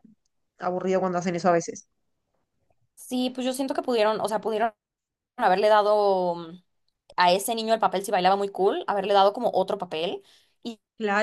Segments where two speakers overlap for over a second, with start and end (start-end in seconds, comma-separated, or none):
none